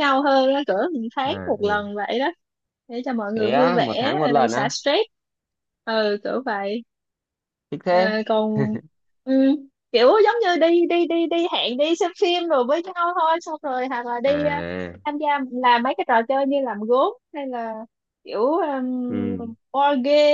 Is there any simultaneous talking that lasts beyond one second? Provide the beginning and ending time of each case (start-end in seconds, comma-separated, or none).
3.3-4.7